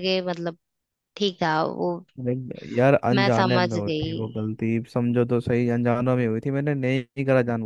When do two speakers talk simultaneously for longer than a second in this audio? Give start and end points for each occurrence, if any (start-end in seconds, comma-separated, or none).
3.1-4.5